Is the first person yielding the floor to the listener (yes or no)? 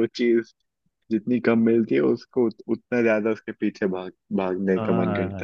yes